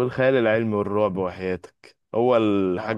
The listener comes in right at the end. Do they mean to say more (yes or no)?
no